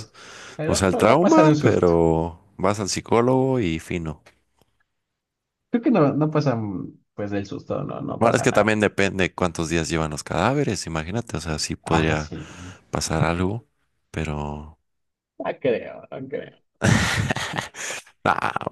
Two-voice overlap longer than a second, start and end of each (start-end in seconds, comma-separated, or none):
0.7-1.9